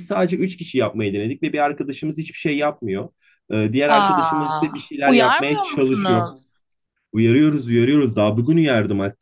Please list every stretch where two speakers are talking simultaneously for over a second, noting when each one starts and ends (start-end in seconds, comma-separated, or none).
3.9-6.3